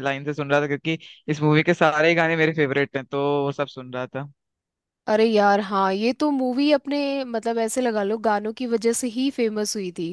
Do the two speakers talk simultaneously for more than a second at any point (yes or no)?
no